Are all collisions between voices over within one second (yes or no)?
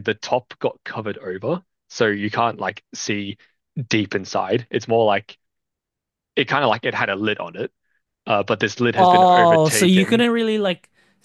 no